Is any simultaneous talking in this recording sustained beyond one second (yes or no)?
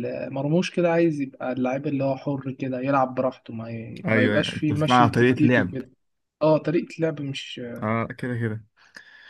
yes